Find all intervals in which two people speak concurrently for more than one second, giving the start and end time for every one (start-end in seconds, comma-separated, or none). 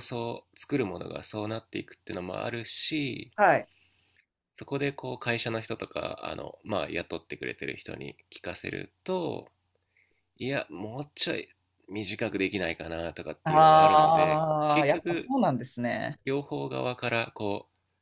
13.4-15.3